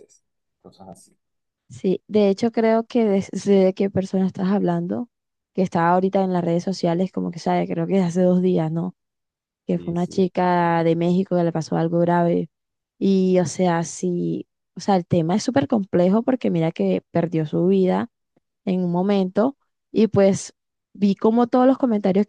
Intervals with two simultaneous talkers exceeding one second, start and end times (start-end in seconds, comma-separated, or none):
9.7-10.9